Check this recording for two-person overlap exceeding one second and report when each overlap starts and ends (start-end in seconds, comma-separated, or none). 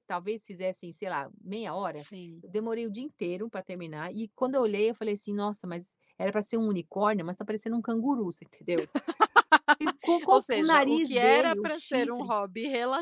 10.3-12.3